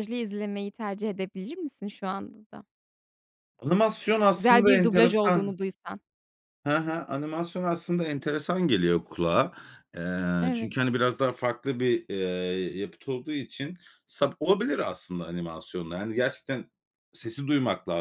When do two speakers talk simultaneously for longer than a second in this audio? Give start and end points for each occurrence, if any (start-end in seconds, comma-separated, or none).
4.3-5.5